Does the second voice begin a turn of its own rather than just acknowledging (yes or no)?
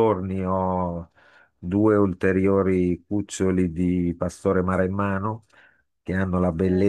no